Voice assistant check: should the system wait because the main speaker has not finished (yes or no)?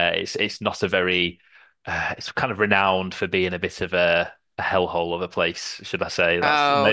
yes